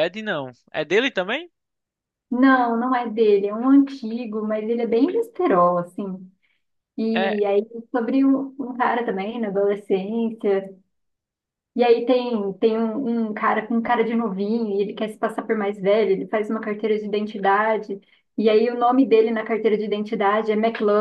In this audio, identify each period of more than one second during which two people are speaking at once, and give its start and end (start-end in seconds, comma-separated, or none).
none